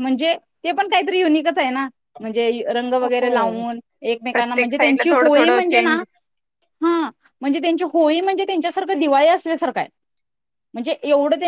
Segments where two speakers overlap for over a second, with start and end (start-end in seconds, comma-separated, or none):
4.3-6.0